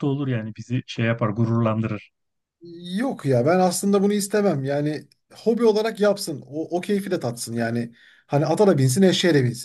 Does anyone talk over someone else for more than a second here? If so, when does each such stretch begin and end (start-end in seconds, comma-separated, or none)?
none